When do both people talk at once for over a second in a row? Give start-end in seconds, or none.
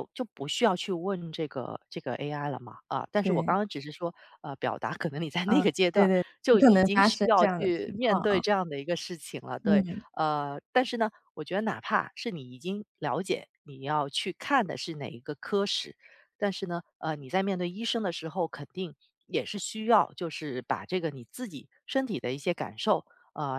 5.4-8.4